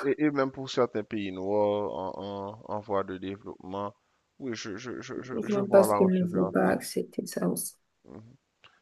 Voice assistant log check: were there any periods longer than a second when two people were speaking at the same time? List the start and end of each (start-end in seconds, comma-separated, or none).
5.4-6.8